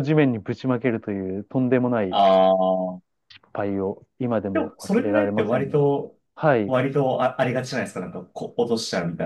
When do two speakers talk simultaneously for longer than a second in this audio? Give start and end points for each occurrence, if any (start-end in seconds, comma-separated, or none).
4.5-5.8